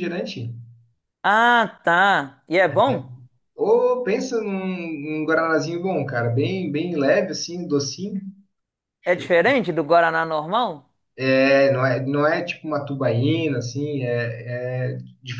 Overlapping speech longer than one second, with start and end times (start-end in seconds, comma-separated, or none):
none